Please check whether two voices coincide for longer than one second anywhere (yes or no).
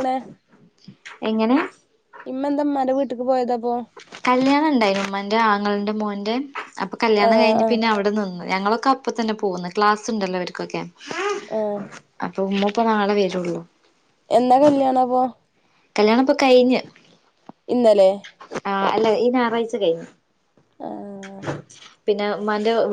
no